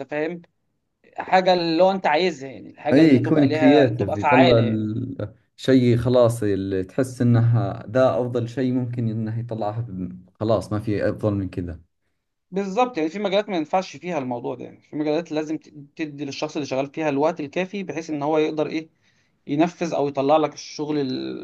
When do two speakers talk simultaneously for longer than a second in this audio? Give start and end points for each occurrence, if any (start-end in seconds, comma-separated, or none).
2.9-4.5